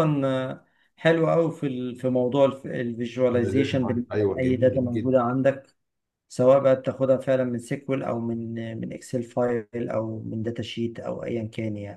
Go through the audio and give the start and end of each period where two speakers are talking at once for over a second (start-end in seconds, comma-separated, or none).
3.3-5.2